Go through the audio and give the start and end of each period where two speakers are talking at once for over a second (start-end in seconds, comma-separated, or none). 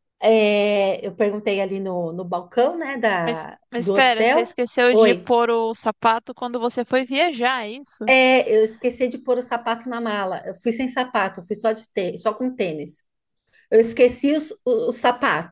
3.2-5.3